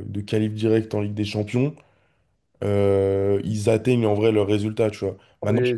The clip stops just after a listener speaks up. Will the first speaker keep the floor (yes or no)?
yes